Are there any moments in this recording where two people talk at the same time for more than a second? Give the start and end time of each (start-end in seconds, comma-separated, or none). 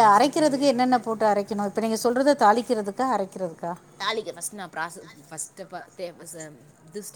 none